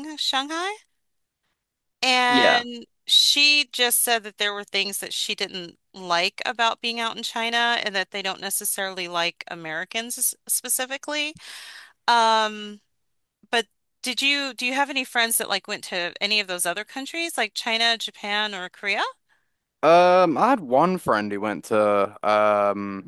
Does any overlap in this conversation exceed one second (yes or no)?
no